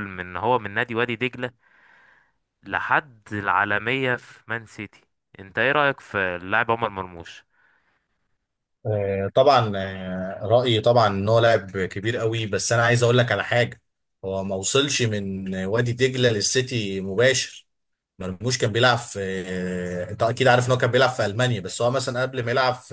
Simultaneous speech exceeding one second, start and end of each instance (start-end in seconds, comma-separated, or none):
none